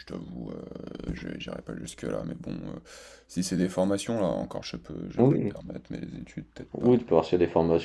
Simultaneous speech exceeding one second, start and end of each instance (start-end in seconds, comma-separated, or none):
none